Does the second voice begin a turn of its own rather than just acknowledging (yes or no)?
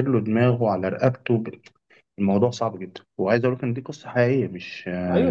yes